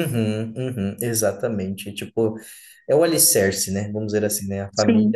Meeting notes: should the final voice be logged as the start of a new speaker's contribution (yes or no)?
no